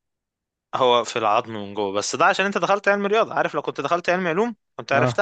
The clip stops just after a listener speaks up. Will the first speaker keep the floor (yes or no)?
yes